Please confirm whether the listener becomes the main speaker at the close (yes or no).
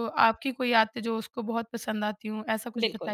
yes